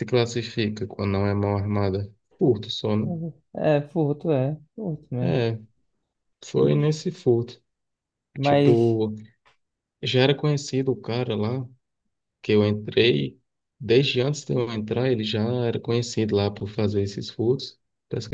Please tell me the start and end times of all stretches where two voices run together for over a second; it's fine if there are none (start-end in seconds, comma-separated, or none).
none